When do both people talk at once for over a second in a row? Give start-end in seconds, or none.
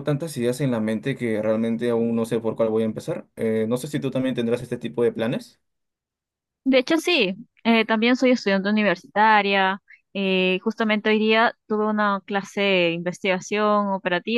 none